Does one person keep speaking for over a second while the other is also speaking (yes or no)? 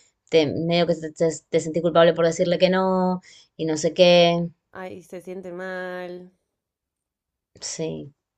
no